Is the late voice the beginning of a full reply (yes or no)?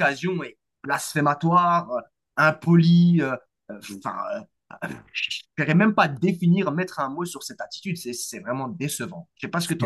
yes